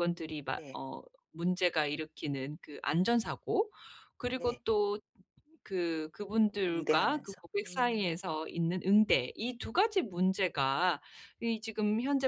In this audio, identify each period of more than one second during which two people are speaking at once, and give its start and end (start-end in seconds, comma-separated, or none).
6.7-8.2